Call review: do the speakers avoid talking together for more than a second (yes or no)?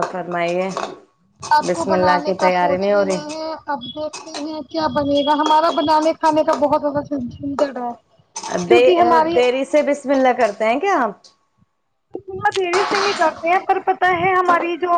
no